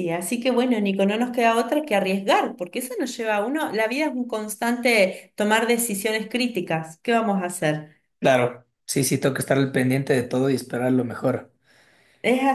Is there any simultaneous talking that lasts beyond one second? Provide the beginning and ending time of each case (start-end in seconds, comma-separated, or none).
none